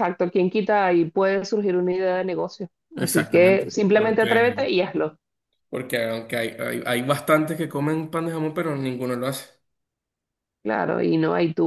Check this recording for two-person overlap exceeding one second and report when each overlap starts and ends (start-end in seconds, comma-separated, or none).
2.9-4.4